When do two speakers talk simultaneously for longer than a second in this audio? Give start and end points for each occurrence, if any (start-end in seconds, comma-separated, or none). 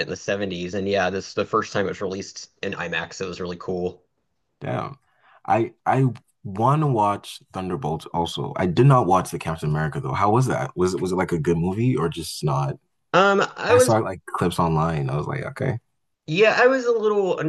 none